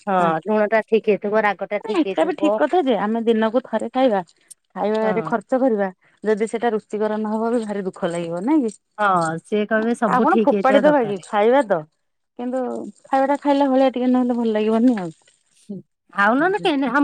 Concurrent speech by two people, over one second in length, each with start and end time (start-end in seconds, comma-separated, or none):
9.0-11.1